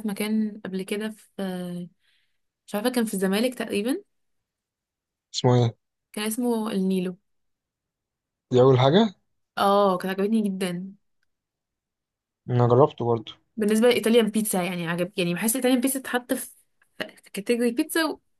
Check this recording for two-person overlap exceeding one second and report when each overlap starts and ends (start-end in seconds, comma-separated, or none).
none